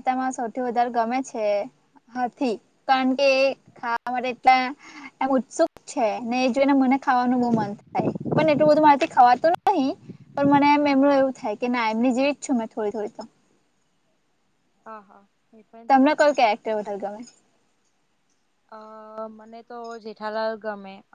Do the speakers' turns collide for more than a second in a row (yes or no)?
no